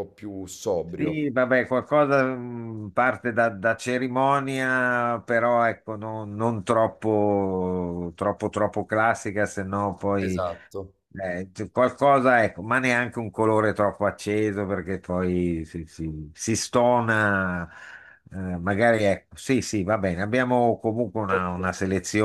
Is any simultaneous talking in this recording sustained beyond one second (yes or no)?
no